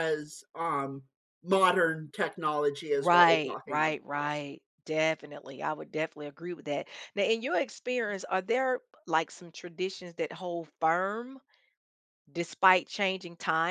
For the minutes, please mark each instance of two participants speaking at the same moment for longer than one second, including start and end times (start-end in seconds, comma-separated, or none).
2.9-4.3